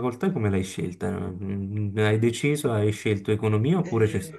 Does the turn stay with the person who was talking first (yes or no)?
yes